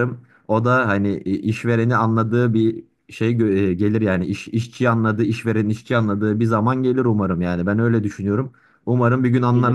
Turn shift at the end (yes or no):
yes